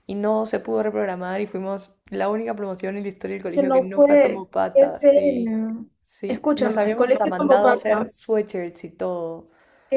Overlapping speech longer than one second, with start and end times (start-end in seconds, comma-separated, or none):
3.5-5.5, 6.3-8.0